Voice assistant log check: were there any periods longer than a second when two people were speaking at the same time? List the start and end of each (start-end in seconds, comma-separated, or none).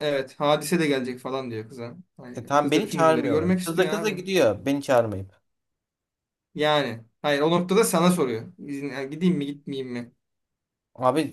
2.4-4.2